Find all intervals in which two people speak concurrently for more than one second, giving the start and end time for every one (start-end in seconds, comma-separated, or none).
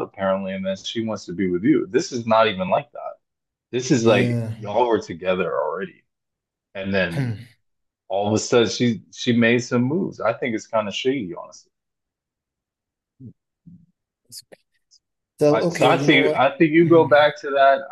15.5-17.3